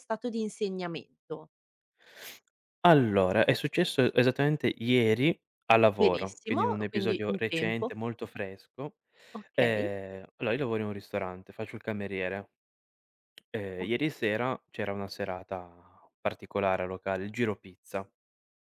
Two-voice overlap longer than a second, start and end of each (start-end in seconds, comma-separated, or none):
6.0-7.9